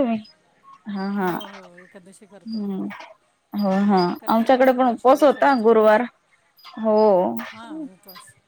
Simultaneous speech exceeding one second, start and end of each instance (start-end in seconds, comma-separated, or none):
4.3-6.0